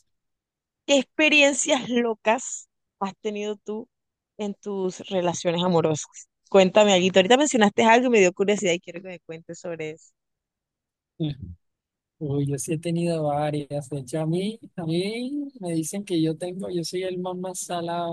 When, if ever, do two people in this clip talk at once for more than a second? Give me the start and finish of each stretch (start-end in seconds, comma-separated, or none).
none